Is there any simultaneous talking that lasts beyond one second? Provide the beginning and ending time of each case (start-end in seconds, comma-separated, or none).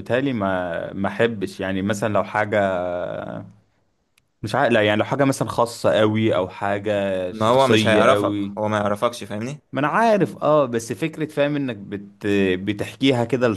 7.3-8.7